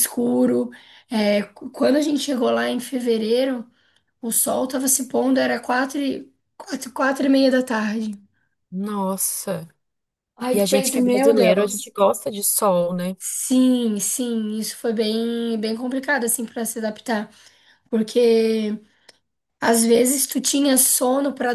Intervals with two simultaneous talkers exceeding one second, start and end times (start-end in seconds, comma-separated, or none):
10.5-11.9